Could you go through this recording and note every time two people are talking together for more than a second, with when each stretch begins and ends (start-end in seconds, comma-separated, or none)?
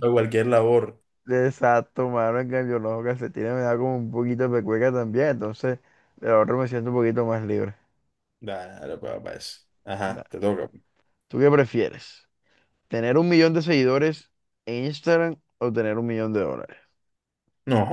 none